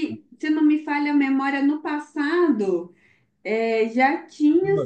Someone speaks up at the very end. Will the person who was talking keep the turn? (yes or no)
yes